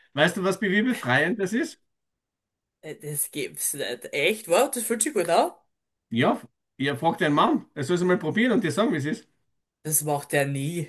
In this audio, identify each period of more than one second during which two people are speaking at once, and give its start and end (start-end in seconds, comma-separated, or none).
none